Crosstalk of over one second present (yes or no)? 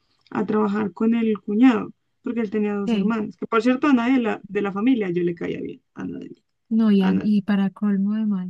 no